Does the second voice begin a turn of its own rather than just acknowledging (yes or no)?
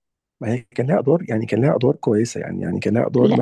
yes